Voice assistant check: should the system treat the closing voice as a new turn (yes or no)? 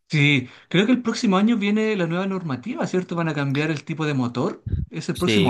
yes